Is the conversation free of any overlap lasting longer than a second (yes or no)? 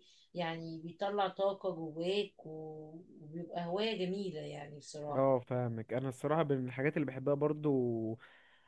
yes